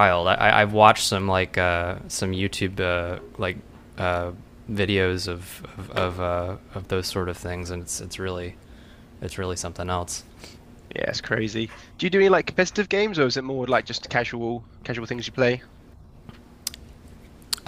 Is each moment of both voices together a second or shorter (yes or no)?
yes